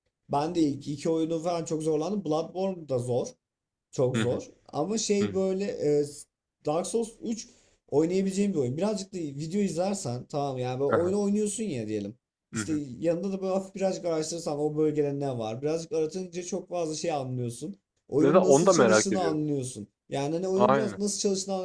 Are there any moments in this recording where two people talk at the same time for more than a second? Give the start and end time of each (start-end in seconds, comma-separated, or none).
18.2-19.4